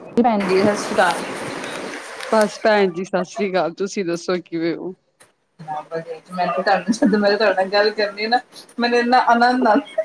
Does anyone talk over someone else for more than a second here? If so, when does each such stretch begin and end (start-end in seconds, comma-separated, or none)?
none